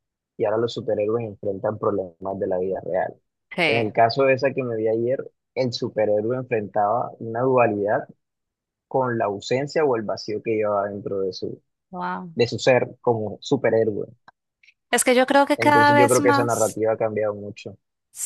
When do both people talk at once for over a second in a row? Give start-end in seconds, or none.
15.6-16.8